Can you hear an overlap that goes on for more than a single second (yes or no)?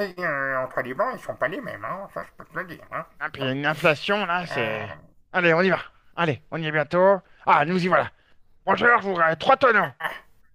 no